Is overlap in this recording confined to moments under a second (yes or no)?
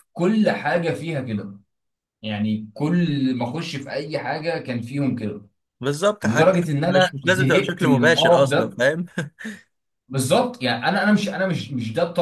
no